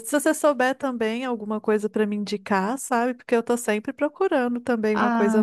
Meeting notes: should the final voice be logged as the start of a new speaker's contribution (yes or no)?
yes